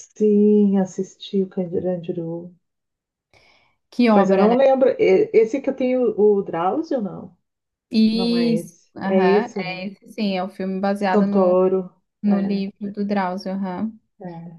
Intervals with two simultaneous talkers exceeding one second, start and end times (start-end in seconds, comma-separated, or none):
8.1-9.8